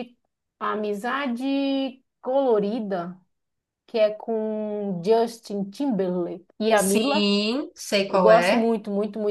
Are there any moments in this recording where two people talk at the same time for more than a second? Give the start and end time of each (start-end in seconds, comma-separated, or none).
none